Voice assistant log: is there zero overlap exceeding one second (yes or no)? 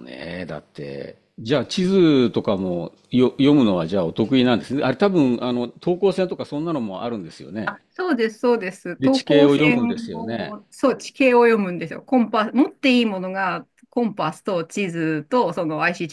no